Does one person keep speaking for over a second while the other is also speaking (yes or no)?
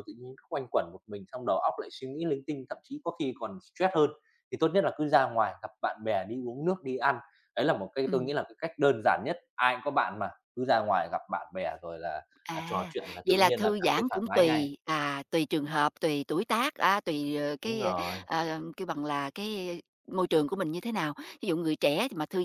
yes